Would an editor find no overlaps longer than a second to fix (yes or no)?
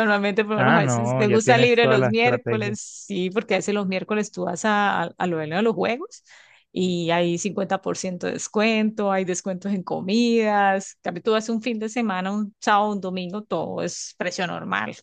no